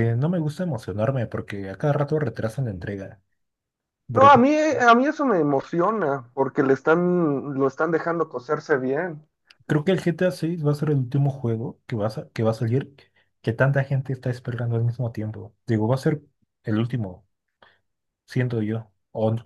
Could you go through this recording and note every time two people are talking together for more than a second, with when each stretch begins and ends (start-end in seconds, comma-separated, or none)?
none